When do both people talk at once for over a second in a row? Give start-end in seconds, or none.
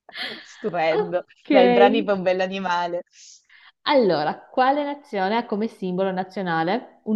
none